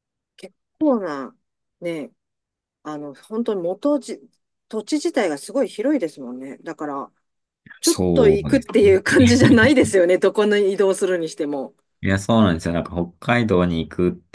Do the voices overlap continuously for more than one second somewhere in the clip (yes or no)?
yes